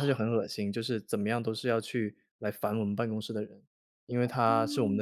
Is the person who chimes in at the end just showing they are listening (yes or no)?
yes